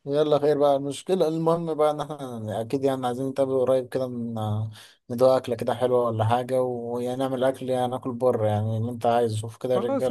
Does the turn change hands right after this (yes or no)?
yes